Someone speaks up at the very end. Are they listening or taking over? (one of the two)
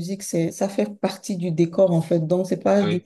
listening